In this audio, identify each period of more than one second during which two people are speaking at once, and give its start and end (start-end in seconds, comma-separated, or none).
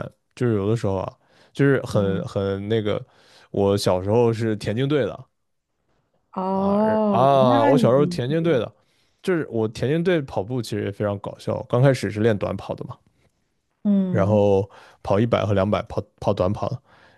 6.5-8.6